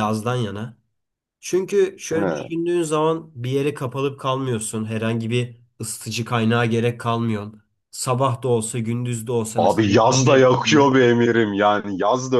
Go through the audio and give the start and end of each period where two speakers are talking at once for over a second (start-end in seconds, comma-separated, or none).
none